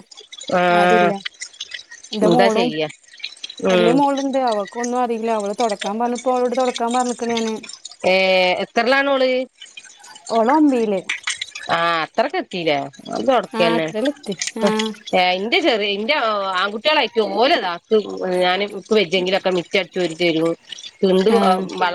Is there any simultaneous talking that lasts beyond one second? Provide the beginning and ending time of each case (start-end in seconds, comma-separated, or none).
none